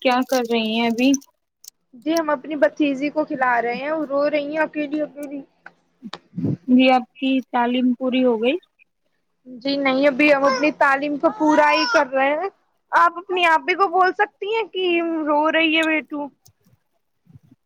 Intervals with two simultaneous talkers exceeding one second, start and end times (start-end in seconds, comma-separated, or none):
none